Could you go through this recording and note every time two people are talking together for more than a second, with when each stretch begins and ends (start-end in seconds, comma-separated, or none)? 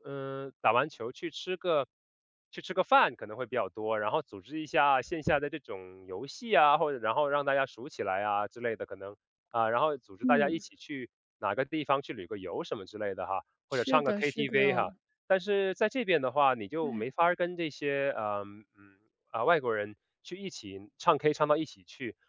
13.7-14.9